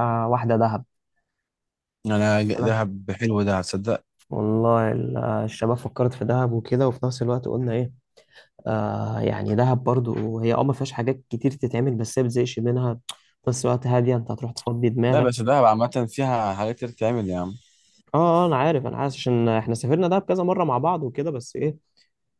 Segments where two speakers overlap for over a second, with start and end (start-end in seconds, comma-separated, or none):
none